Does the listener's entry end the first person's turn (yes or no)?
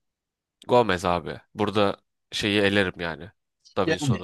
no